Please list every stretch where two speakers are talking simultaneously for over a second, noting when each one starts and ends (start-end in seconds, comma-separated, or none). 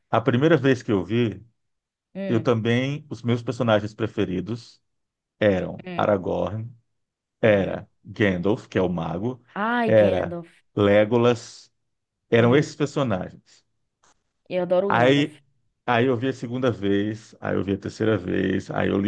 none